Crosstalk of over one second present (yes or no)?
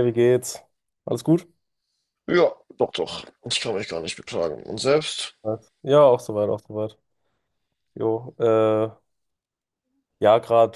no